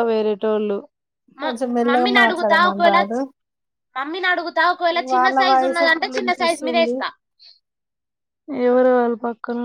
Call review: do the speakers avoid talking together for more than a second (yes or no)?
no